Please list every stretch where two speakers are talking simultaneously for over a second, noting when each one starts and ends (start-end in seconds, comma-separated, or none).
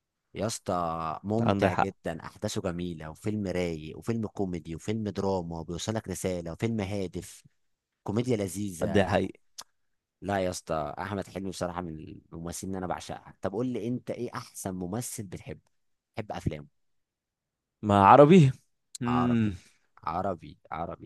none